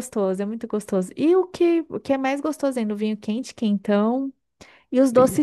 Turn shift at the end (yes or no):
no